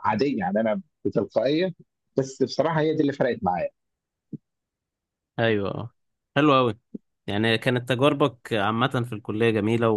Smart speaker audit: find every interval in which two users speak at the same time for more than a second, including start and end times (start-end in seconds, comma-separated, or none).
none